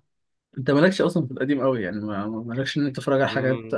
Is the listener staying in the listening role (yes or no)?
yes